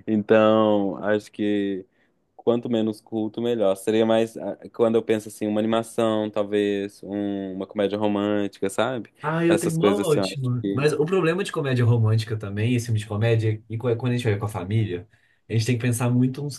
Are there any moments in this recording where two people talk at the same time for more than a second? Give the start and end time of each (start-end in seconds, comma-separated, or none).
9.5-10.9